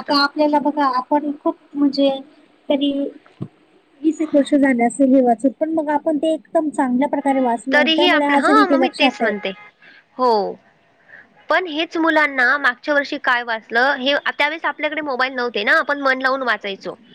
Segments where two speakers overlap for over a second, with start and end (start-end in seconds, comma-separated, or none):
7.7-9.3